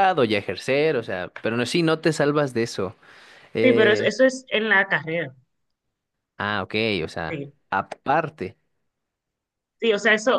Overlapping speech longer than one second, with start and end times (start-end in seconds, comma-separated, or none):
none